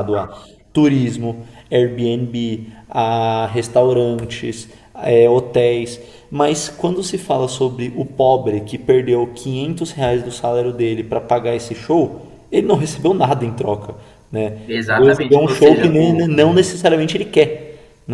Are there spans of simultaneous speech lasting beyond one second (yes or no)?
yes